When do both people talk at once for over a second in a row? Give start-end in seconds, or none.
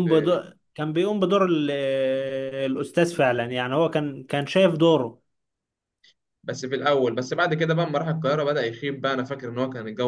none